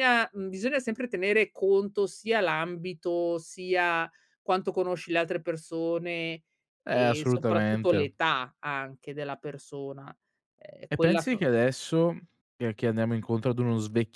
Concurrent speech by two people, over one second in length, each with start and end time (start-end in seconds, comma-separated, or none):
6.9-8.1